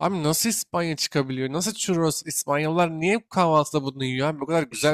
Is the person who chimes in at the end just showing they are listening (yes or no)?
no